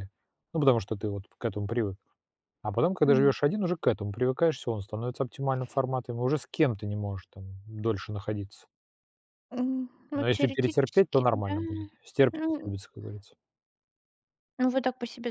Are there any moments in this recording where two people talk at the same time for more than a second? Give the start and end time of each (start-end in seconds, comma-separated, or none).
10.2-11.6